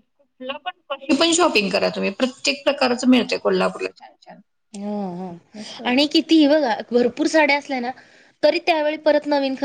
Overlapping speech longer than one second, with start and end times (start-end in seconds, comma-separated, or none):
none